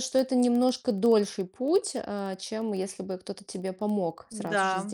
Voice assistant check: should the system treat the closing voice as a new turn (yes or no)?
yes